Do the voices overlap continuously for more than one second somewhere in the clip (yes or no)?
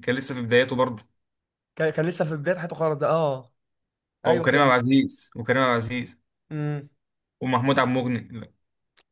no